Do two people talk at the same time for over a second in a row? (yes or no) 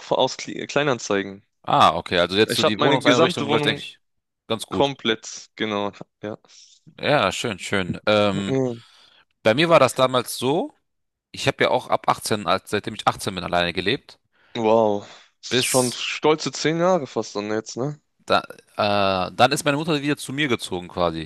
yes